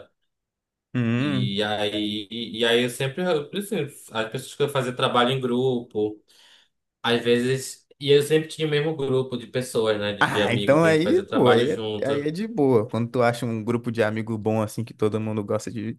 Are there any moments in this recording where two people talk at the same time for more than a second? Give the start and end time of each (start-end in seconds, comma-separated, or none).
10.2-12.3